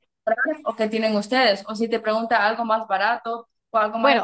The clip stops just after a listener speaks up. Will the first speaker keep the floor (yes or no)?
no